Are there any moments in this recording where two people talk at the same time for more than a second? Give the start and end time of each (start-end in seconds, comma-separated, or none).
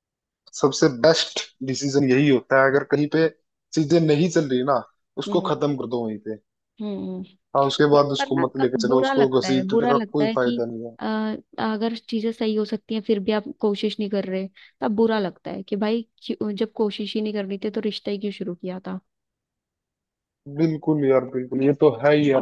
8.0-10.6